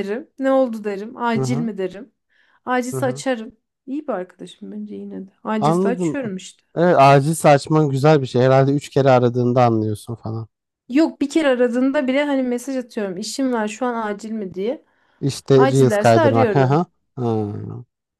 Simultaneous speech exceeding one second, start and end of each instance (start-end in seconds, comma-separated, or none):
15.6-16.8